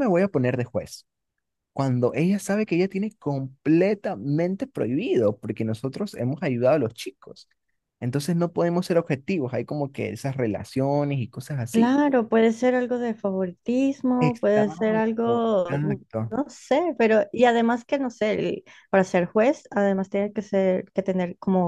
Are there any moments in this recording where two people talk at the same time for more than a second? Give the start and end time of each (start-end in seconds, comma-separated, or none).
14.3-16.4